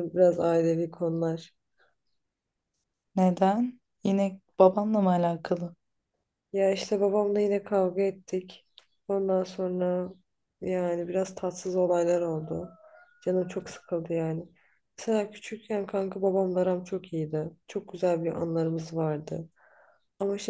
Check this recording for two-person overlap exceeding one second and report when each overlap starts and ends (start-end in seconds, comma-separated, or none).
none